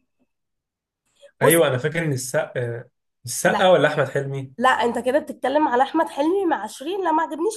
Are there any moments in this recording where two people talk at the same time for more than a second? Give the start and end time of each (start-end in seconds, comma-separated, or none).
none